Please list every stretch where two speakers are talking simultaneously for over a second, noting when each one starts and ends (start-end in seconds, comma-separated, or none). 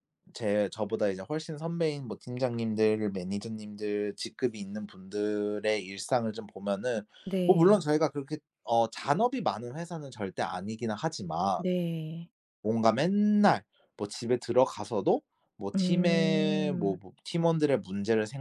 15.7-17.0